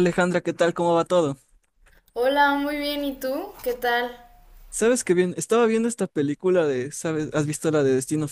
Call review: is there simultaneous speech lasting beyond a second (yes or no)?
no